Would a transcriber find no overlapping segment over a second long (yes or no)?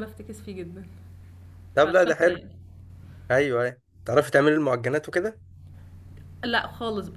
yes